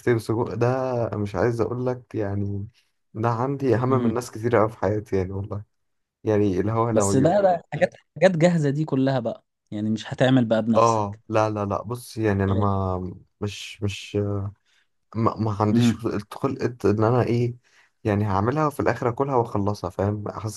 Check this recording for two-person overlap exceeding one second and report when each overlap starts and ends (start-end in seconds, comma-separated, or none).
none